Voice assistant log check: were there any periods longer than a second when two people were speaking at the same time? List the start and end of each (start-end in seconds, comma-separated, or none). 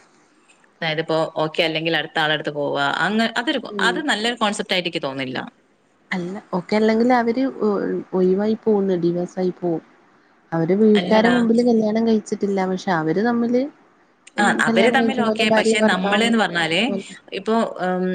14.4-16.3